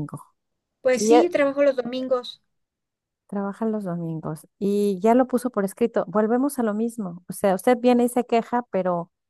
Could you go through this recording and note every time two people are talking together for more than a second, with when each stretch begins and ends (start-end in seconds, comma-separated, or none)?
none